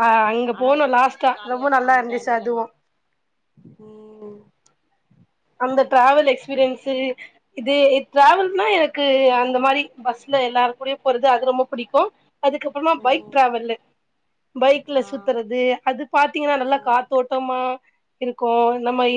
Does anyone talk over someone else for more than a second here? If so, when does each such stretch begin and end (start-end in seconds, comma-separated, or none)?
0.6-2.6